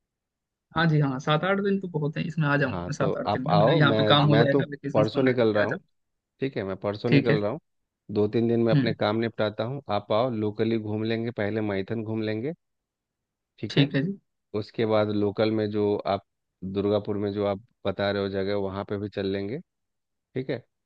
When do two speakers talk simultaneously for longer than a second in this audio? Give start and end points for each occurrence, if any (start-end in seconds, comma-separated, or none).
2.6-5.8